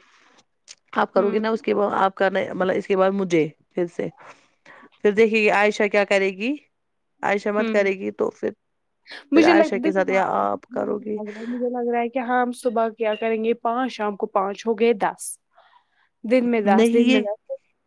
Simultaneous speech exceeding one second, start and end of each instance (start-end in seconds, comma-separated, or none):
9.3-11.2